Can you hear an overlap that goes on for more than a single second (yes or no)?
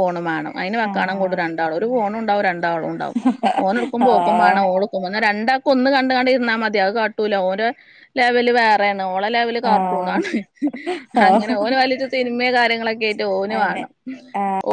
no